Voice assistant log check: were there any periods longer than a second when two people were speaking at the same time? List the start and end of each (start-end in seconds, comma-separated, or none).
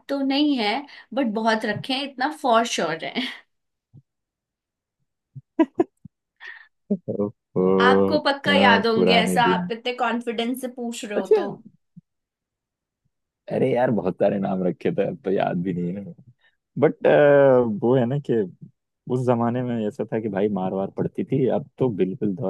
8.2-9.7